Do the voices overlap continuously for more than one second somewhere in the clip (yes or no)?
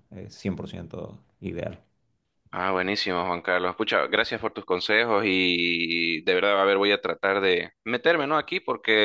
no